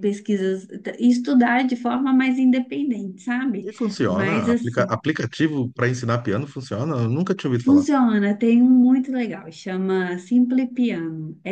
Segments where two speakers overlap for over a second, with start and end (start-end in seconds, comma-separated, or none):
3.6-5.0